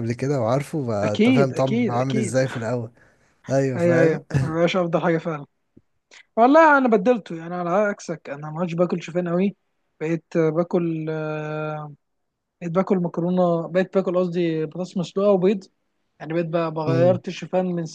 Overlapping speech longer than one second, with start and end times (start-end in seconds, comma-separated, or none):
1.0-2.4